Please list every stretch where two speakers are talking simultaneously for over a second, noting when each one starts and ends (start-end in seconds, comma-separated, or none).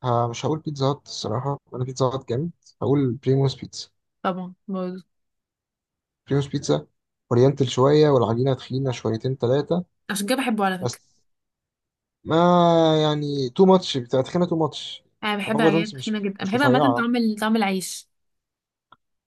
15.5-17.1